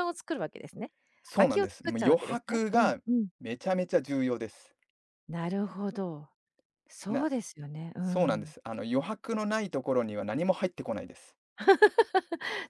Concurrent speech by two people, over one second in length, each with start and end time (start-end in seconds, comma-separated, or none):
1.4-3.0